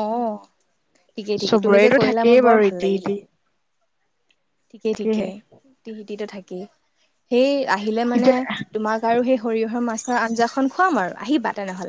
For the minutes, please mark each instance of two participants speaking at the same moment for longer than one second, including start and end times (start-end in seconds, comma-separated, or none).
1.2-3.1